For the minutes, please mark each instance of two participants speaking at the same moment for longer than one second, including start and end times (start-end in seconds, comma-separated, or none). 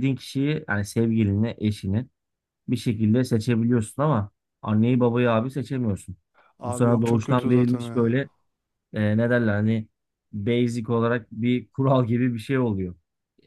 6.6-8.1